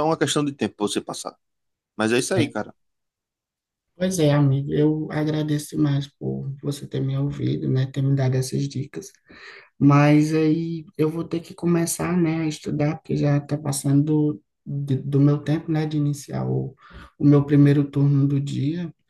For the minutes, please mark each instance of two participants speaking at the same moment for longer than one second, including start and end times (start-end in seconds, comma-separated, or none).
none